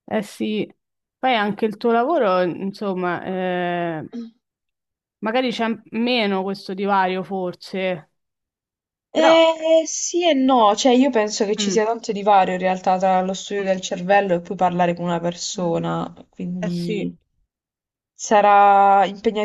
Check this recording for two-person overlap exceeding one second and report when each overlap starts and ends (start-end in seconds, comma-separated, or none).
none